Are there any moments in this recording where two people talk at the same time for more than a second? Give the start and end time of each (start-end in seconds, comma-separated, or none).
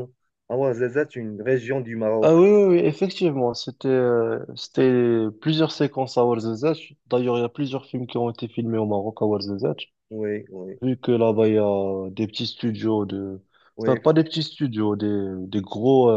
none